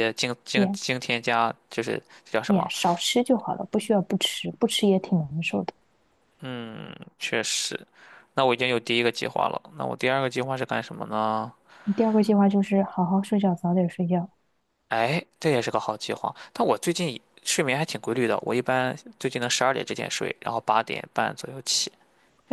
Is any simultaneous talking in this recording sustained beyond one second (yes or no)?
no